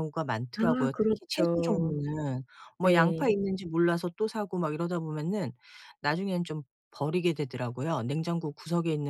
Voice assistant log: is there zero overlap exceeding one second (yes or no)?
no